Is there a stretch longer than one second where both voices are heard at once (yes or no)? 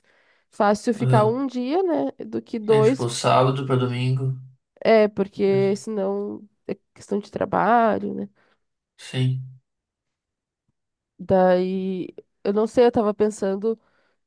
no